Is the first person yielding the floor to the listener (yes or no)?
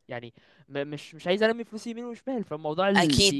yes